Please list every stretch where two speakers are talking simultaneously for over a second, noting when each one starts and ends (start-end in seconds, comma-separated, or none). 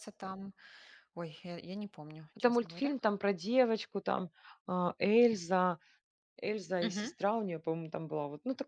none